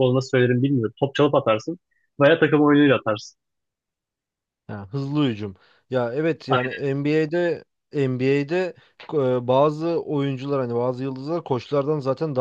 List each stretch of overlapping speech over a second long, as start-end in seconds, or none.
none